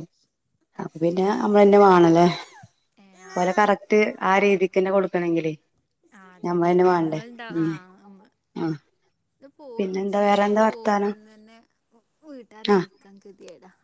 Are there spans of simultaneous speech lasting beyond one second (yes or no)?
yes